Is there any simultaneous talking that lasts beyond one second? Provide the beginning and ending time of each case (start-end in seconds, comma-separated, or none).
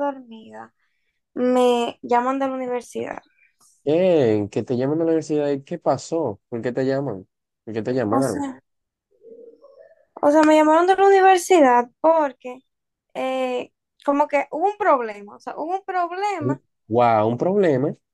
none